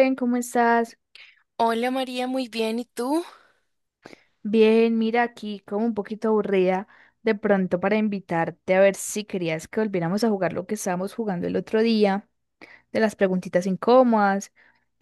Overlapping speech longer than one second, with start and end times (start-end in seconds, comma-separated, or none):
none